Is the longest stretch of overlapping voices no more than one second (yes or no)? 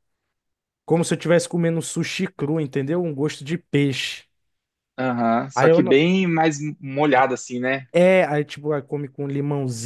yes